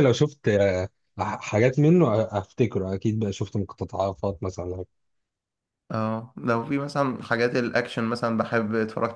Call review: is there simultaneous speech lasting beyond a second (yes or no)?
no